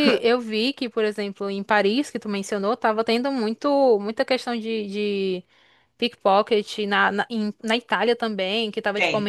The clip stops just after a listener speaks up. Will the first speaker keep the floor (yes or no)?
yes